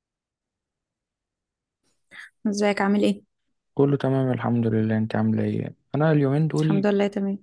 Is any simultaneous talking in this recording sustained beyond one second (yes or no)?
no